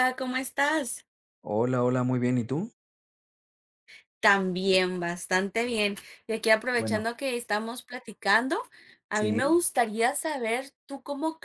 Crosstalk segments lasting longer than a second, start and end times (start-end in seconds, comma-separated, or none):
none